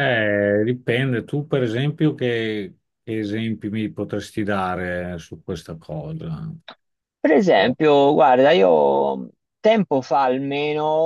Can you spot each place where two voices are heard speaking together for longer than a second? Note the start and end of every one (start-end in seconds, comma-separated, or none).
none